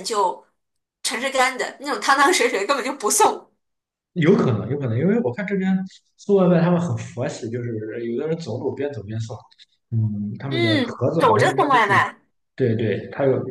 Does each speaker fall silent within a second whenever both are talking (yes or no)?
no